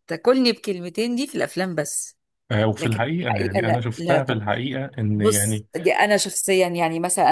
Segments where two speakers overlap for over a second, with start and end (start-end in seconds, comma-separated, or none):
2.8-4.4